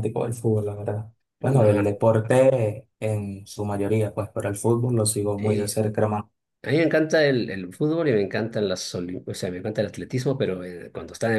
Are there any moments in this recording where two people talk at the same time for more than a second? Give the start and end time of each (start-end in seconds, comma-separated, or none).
none